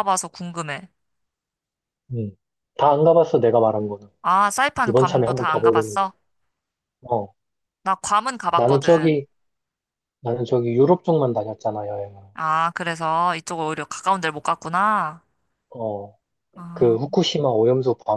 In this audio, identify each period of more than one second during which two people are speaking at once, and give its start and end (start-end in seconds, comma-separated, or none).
4.8-6.0